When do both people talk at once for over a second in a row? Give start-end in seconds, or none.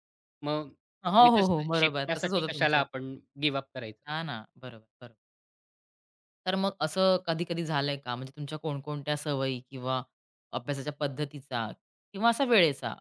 1.2-2.8